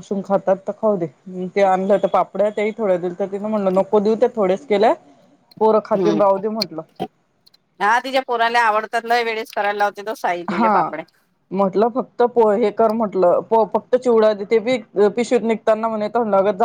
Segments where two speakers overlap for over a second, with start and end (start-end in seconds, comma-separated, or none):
none